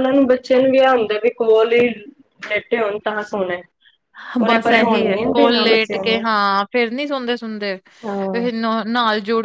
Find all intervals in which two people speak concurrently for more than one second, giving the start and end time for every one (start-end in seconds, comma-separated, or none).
4.5-6.2